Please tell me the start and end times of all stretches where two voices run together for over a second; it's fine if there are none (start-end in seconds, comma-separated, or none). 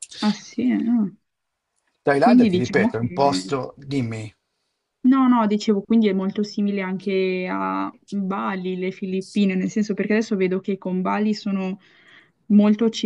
2.2-3.5